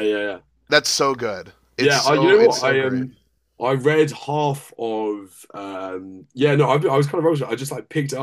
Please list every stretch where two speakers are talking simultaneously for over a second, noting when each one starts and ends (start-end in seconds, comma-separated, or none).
1.8-3.0